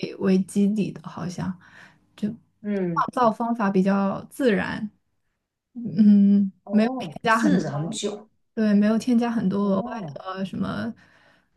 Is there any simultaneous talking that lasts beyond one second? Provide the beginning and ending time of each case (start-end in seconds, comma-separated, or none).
6.6-8.0